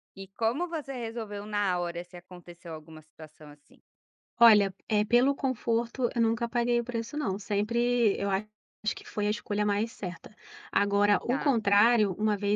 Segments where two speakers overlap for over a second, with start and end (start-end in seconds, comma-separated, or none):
none